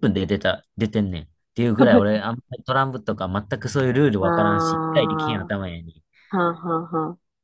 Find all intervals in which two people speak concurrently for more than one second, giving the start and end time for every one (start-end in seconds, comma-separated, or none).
4.2-5.5